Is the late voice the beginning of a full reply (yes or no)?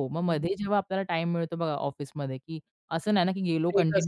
no